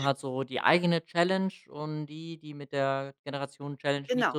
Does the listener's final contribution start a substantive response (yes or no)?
no